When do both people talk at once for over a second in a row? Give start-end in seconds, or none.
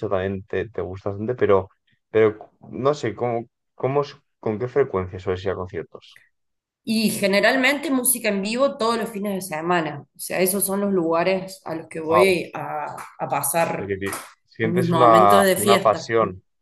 14.6-16.1